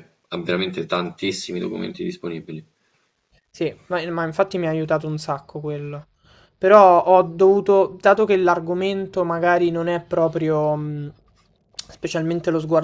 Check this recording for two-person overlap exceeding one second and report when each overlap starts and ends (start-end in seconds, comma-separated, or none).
none